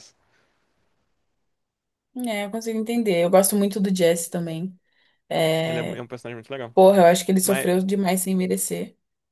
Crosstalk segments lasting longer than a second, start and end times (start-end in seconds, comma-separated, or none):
none